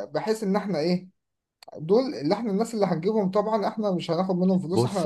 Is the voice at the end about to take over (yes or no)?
yes